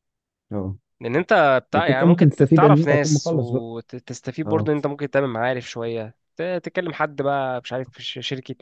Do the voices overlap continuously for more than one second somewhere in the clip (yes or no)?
yes